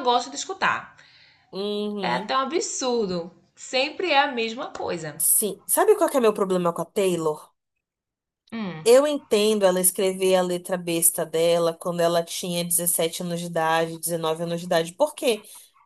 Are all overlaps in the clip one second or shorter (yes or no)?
yes